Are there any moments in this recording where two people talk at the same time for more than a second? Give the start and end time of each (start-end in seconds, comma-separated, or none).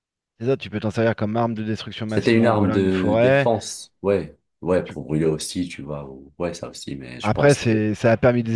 2.1-3.5